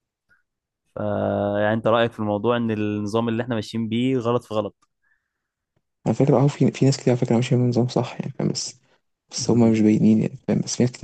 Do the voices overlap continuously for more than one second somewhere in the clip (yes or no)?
no